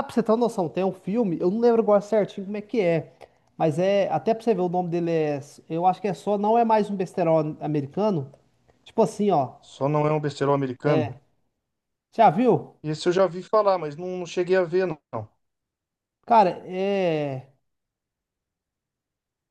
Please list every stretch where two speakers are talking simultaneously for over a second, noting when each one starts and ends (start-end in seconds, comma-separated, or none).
none